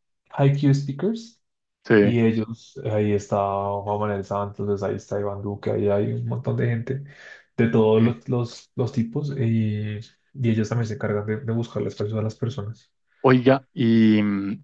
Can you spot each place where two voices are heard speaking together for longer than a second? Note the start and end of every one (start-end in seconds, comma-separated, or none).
none